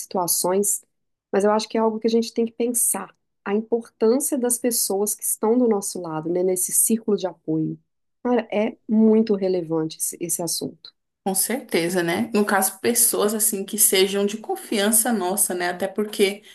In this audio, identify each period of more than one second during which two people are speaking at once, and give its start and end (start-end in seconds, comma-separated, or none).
none